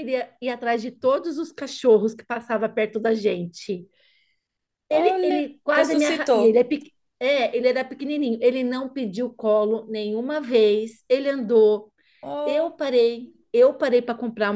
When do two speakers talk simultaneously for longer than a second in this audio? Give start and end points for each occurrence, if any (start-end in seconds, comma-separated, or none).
4.9-6.6